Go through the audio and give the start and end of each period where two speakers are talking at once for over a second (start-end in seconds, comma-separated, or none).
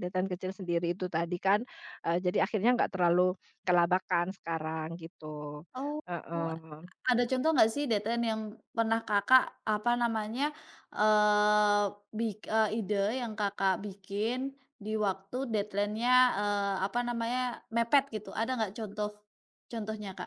none